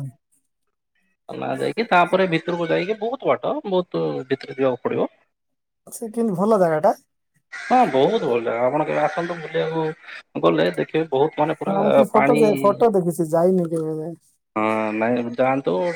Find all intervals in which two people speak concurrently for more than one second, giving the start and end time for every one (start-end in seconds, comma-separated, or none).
none